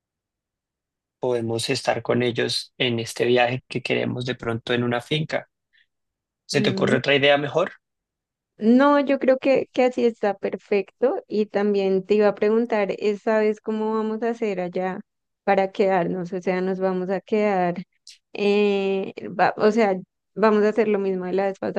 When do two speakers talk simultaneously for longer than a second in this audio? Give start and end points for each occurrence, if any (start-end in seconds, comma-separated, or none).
none